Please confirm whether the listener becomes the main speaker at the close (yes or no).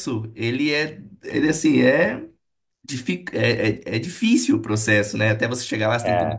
no